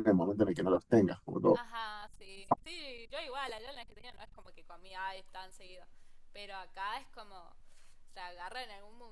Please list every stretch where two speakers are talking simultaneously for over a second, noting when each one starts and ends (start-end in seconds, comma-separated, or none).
none